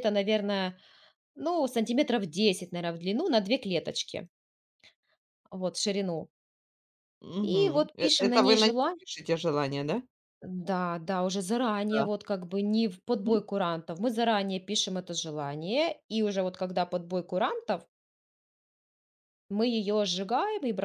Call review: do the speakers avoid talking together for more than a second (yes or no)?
no